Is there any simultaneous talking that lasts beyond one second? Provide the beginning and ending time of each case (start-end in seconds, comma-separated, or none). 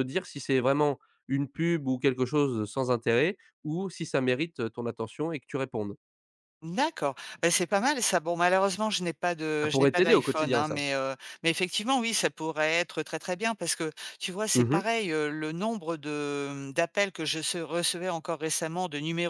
9.6-10.8